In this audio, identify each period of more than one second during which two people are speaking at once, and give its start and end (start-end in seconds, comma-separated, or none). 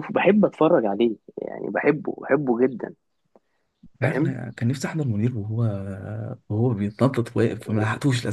none